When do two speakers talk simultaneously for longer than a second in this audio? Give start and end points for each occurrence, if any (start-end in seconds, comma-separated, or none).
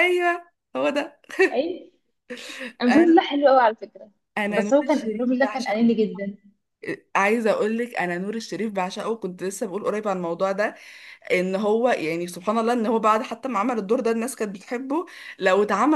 4.5-5.9